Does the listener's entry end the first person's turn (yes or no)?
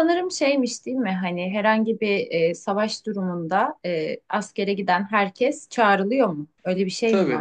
yes